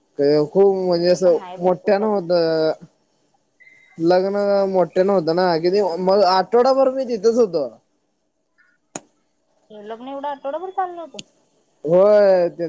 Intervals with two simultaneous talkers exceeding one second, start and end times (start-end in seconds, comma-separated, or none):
0.6-2.6